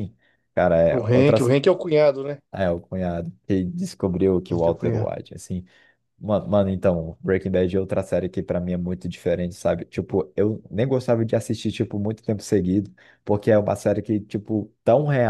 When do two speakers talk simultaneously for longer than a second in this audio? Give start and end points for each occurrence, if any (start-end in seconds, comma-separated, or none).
none